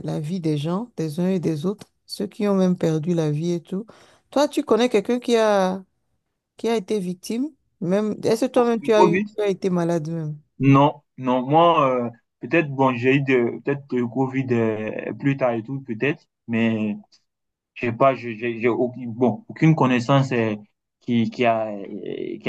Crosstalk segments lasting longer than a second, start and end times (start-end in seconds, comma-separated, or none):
none